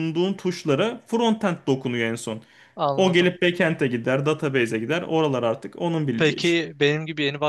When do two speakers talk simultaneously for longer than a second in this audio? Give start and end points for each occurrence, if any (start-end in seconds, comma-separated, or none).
none